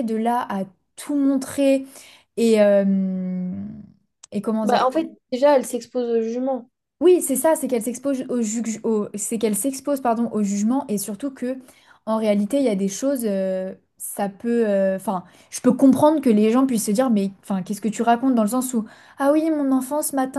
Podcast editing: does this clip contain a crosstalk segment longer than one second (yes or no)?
no